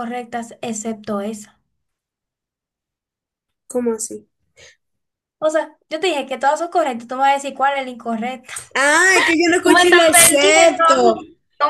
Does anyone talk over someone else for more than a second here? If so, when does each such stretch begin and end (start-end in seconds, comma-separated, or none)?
9.6-11.0